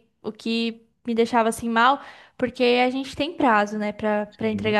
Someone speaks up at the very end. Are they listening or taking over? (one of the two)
listening